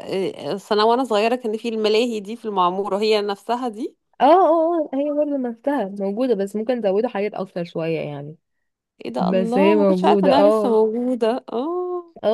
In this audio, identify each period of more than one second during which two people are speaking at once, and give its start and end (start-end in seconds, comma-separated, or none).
9.2-10.8